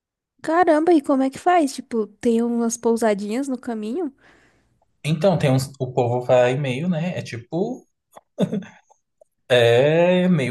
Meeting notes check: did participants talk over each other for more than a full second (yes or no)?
no